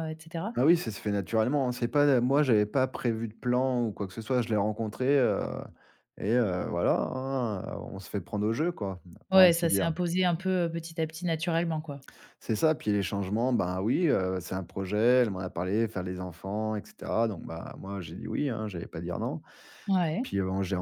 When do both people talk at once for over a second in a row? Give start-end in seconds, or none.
none